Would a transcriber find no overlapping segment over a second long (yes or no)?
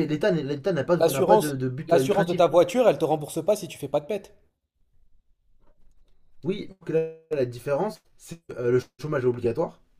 no